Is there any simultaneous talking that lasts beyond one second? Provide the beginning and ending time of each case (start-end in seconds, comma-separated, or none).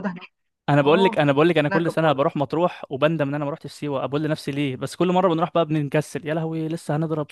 0.8-2.4